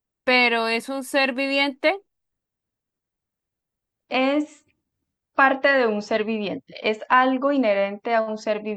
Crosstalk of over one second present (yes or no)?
no